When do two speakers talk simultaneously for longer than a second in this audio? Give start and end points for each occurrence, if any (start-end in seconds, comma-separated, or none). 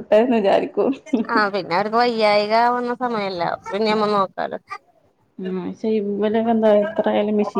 none